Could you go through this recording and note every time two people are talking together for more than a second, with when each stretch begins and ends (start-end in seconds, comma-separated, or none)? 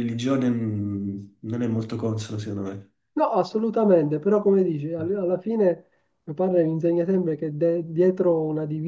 none